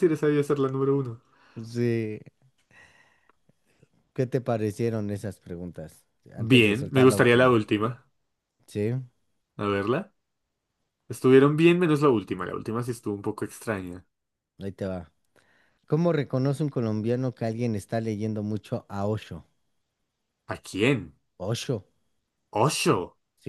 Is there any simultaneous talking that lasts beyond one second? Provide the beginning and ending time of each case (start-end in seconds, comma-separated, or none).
6.3-7.6